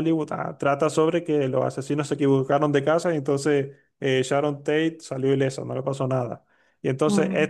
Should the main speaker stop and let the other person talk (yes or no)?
no